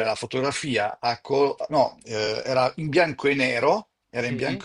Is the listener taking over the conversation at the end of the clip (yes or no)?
no